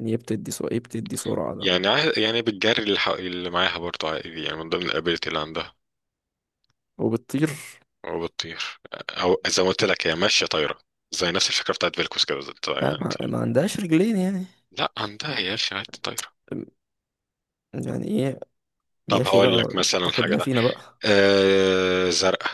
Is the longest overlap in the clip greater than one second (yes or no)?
yes